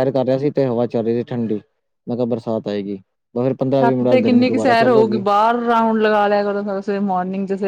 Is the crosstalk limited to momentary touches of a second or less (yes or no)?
no